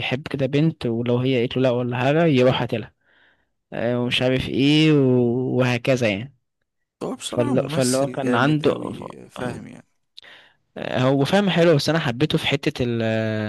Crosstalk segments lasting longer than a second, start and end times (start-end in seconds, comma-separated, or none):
7.2-9.6